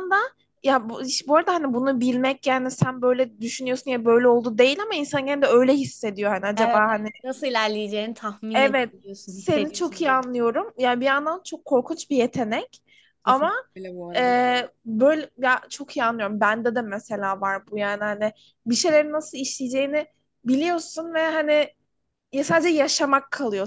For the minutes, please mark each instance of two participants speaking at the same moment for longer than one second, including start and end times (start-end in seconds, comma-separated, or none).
8.5-10.2